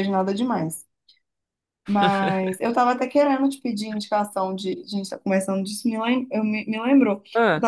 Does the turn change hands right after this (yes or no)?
no